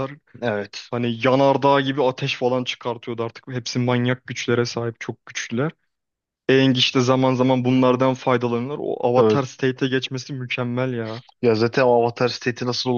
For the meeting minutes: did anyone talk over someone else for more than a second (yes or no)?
no